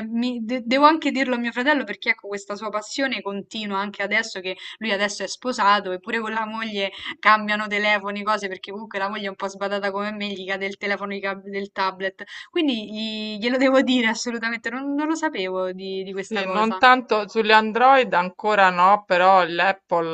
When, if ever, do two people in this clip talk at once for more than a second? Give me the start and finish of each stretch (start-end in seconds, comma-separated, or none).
none